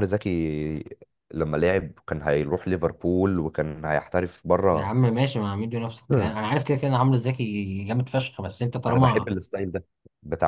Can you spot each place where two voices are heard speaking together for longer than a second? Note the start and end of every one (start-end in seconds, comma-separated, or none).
none